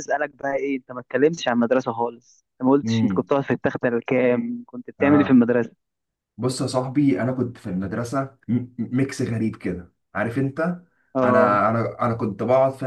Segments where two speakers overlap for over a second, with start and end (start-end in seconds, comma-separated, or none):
none